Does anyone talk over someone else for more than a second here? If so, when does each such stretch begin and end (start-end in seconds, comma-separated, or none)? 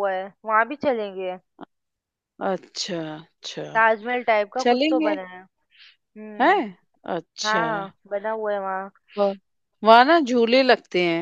none